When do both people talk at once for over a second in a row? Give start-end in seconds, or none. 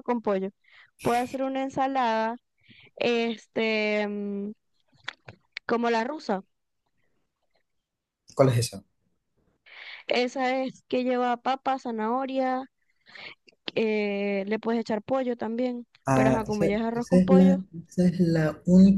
16.1-17.6